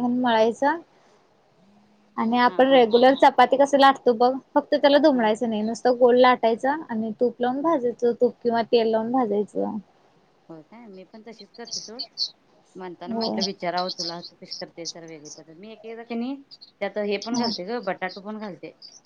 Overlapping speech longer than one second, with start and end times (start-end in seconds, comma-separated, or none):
none